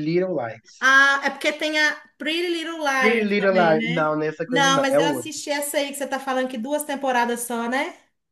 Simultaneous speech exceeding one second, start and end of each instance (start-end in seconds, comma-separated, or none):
3.0-5.3